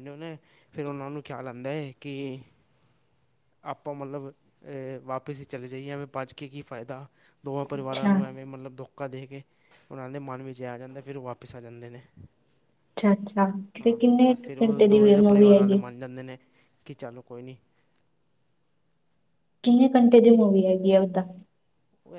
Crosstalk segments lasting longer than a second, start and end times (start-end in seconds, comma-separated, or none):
13.8-15.8